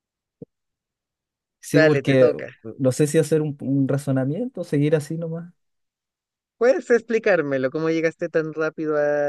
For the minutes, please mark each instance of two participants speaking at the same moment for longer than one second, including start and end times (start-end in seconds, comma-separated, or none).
none